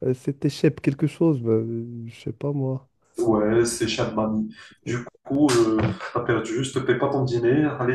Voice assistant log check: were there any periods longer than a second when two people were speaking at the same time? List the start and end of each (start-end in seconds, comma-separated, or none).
none